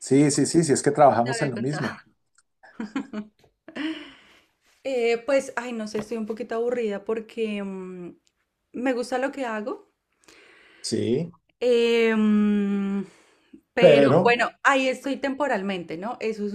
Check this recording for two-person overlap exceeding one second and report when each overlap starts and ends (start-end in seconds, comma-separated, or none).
none